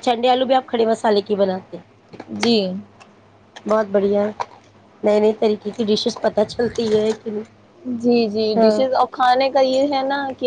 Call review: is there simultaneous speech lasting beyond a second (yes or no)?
no